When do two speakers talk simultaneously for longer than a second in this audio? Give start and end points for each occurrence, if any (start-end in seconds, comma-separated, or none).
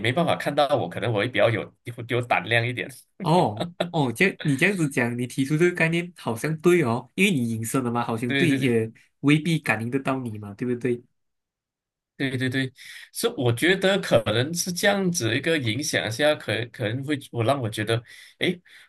none